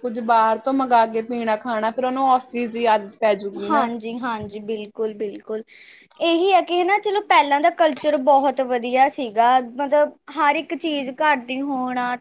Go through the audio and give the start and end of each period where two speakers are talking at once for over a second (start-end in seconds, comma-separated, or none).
none